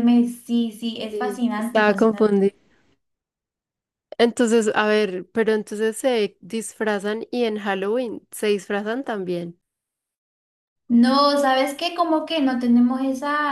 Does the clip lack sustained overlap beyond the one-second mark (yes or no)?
no